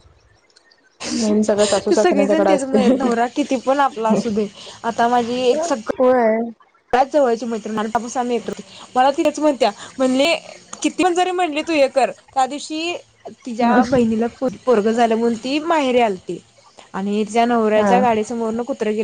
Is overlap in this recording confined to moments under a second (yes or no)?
no